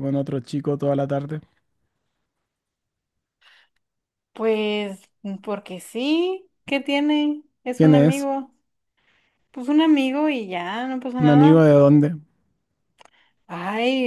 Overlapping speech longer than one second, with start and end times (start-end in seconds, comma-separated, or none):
none